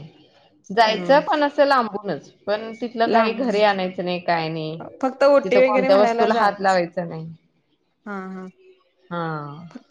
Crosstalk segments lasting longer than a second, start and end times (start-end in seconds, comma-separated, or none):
5.0-6.8